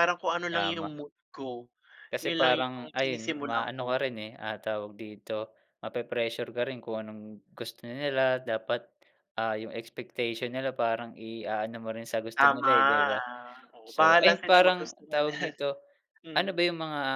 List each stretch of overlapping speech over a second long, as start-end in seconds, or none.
2.2-4.0, 13.9-15.5